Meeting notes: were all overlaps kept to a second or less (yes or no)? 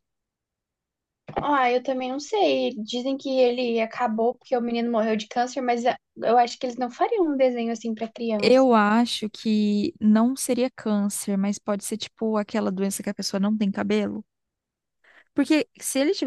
yes